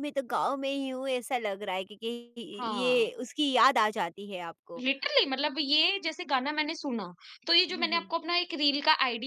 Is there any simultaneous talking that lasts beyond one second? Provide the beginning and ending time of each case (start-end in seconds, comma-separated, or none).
none